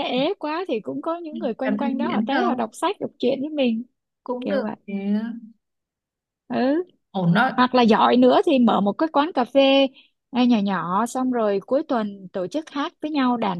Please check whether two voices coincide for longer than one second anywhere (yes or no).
yes